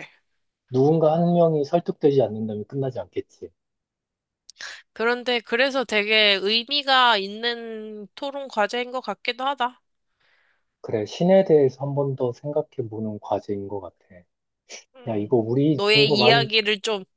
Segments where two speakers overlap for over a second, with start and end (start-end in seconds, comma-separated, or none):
15.1-16.5